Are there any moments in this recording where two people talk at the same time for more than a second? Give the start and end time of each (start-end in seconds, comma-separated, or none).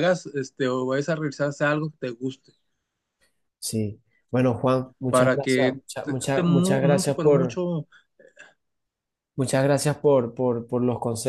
5.1-7.6